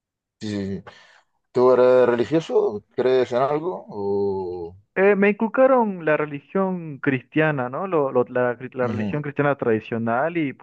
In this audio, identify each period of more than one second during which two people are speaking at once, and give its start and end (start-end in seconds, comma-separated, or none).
none